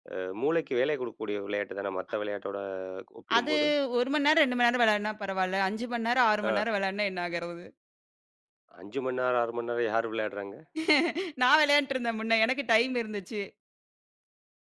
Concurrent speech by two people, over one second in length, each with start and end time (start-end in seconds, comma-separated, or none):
none